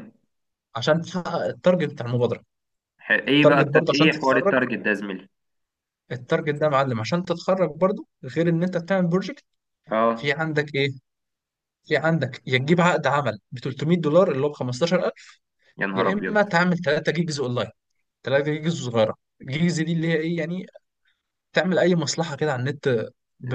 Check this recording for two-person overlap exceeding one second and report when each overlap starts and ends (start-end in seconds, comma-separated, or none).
3.4-4.5